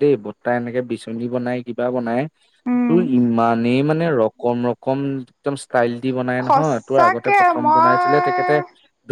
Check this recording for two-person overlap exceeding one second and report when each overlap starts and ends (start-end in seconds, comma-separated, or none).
6.5-8.5